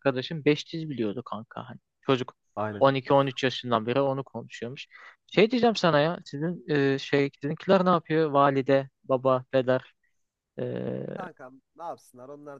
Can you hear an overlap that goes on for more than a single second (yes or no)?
no